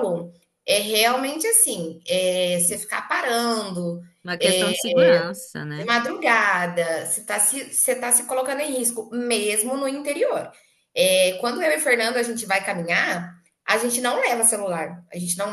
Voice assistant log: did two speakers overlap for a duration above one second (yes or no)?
no